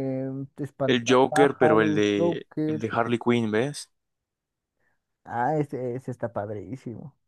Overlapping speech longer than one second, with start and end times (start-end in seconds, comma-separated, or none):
0.8-2.9